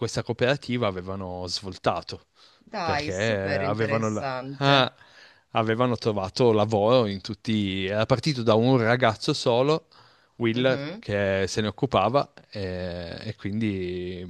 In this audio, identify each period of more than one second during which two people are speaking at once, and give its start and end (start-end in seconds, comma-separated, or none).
2.8-4.9